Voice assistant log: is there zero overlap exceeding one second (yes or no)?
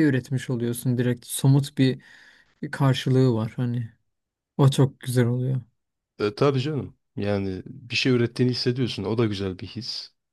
yes